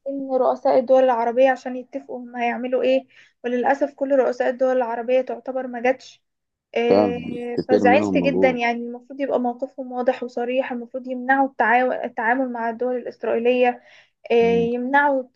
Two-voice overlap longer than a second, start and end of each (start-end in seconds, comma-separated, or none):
6.9-8.6